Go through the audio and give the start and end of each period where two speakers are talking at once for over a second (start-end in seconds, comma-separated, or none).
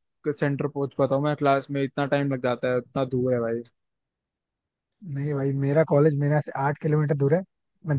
none